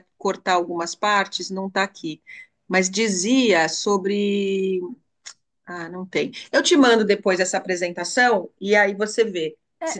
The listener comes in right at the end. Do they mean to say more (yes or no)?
yes